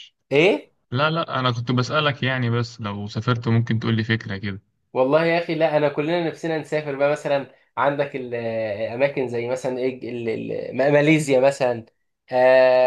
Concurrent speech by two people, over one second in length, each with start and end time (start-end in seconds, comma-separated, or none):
none